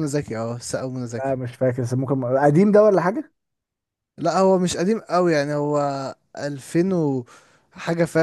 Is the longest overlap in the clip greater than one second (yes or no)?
no